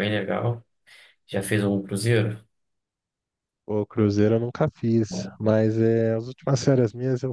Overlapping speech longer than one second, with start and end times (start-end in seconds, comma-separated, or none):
none